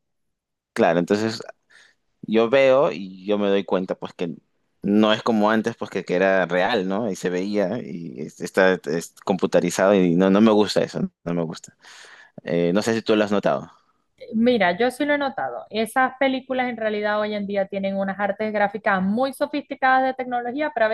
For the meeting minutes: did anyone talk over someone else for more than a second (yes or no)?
no